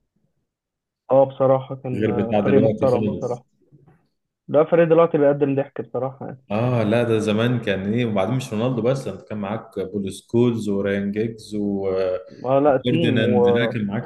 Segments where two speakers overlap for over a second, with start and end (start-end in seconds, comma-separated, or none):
1.9-3.4